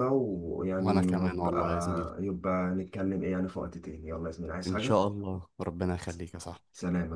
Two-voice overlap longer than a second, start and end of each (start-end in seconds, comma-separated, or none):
0.8-2.1